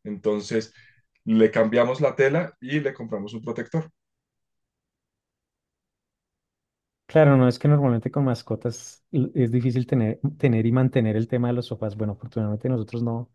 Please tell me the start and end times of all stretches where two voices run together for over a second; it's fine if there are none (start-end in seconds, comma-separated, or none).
none